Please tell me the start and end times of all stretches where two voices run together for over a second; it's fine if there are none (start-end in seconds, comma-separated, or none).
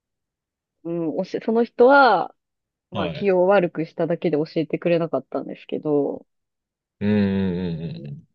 none